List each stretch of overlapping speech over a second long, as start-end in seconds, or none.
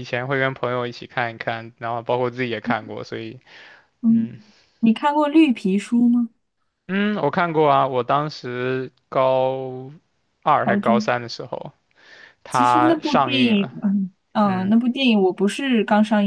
12.5-13.7